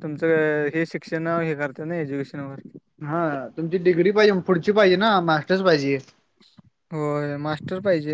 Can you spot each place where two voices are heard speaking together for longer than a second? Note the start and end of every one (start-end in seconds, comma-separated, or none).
none